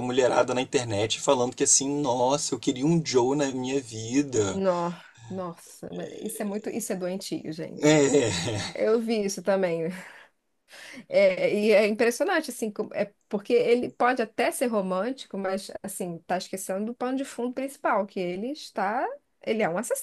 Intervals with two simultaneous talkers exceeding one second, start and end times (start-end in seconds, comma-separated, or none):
none